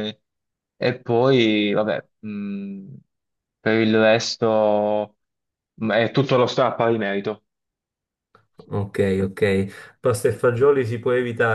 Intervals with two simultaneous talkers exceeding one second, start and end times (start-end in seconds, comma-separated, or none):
none